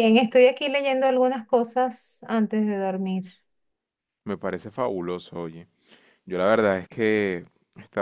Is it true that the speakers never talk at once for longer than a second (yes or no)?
yes